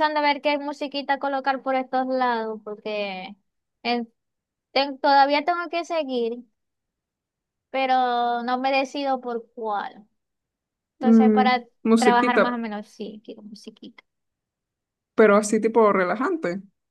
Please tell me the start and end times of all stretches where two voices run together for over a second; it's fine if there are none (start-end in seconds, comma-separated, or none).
11.0-12.6